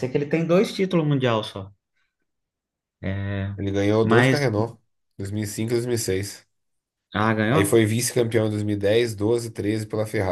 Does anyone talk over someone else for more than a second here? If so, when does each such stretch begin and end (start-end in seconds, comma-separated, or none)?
none